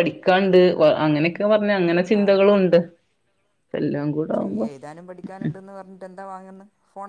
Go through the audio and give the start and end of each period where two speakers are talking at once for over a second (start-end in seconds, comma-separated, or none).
none